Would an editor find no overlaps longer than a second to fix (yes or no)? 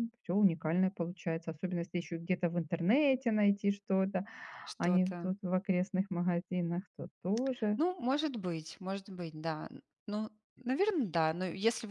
yes